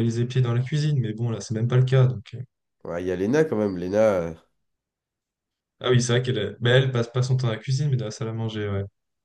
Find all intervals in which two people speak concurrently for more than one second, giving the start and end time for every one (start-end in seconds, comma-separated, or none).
none